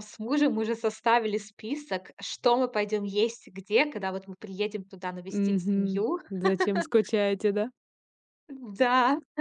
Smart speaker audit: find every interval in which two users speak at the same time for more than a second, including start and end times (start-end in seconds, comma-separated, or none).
none